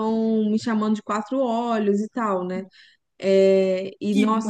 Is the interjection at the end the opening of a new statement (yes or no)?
no